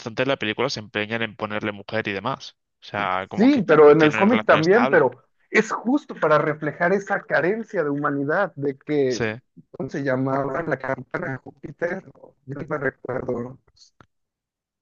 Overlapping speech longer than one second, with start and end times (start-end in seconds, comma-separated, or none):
3.4-5.1